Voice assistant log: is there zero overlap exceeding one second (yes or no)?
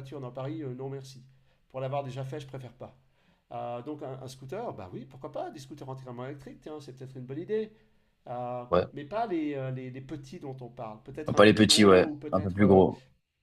no